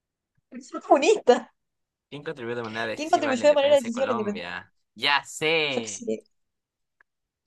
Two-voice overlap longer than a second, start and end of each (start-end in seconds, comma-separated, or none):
3.0-4.5